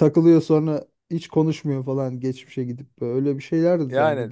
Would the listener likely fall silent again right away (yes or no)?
no